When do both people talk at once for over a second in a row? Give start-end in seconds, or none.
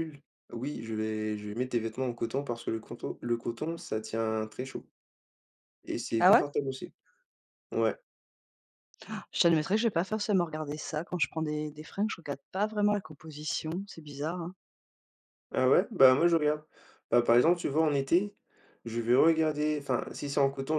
none